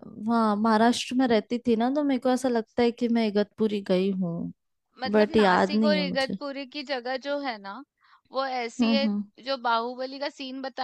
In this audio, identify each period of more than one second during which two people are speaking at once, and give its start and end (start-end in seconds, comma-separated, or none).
5.1-6.4